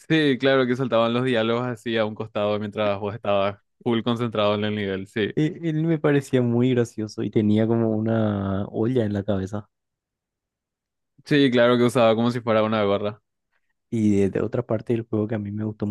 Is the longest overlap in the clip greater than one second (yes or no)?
no